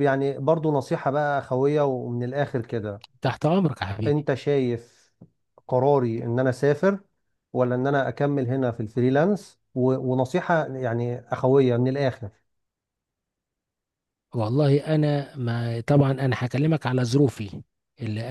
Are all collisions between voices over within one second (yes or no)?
yes